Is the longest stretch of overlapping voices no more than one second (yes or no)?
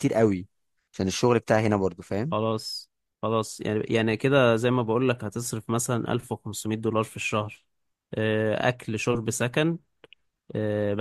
yes